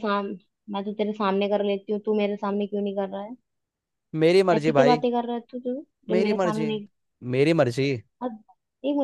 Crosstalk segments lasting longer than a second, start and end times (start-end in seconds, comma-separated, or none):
none